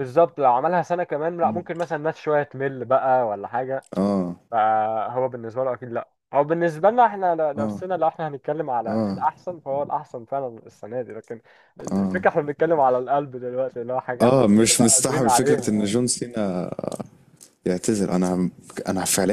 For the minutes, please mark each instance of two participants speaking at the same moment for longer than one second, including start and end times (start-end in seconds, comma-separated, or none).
14.2-15.9